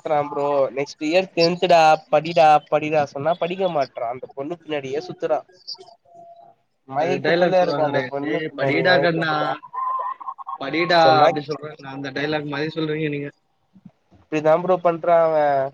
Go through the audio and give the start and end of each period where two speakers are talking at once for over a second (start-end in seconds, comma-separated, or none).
7.0-9.3